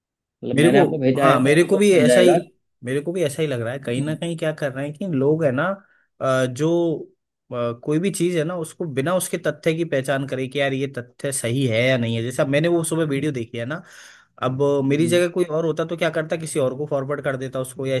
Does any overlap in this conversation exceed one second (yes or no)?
yes